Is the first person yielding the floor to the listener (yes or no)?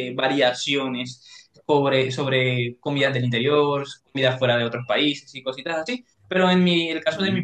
no